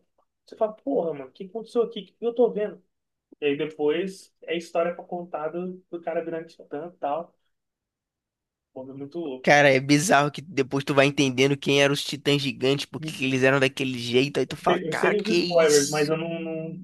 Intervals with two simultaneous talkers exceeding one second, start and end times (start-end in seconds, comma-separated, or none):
14.7-16.2